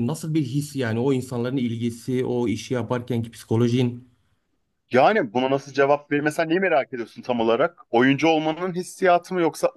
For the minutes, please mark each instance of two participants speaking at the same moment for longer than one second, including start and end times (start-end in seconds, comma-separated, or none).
none